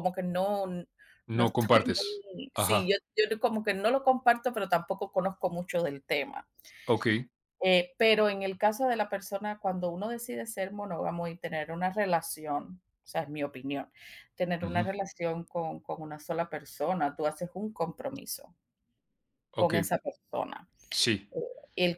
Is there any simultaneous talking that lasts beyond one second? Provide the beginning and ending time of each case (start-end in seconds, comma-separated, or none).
1.3-3.0